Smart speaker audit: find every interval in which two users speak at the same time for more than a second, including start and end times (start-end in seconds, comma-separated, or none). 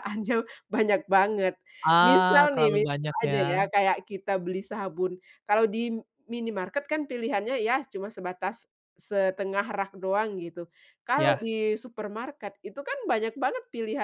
2.0-3.6